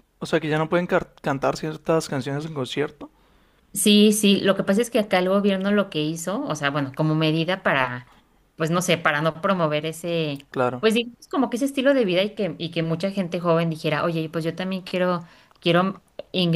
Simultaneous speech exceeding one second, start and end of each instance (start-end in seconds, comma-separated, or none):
none